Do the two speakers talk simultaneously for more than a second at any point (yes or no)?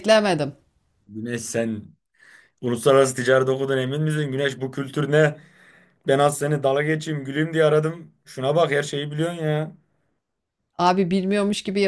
no